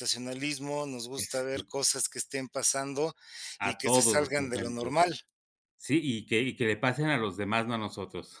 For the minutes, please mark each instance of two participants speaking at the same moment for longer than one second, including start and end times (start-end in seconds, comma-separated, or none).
3.6-4.9